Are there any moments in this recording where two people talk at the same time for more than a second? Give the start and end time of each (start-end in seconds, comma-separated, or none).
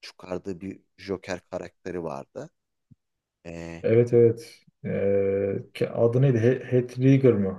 none